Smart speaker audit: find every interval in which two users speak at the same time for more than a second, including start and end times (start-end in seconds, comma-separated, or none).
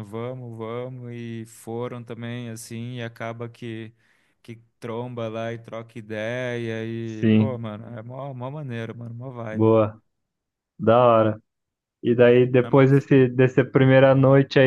none